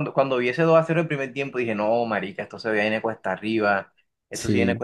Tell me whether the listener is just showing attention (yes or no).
yes